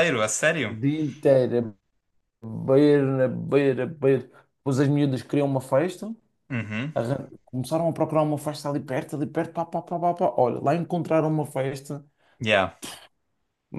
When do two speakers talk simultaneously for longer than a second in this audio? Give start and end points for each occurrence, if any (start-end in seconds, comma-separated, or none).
none